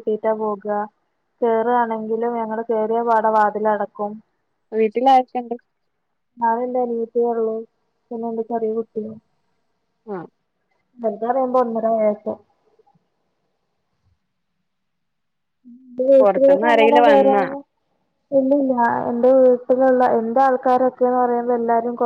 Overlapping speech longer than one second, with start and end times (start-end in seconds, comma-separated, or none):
16.2-17.4